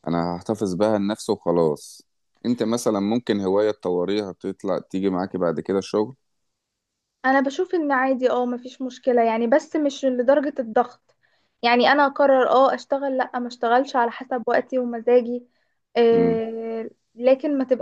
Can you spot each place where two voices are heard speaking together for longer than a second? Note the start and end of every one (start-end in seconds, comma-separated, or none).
none